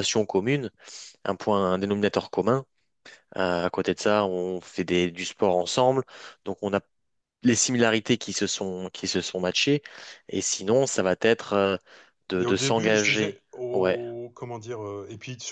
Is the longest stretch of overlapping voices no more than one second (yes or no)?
no